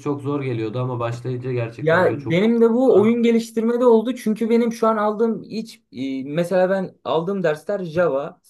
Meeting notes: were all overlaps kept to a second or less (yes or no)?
no